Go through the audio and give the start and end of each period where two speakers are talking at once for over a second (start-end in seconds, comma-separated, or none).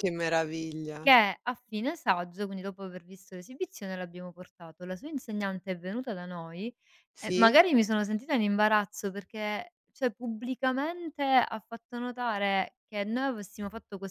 none